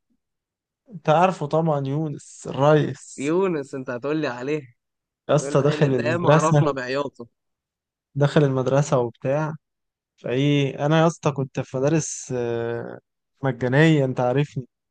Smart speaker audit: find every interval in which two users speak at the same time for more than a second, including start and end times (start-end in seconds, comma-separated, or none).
5.3-6.8